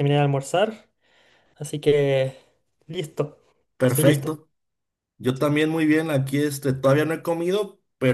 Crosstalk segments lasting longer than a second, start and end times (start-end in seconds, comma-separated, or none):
none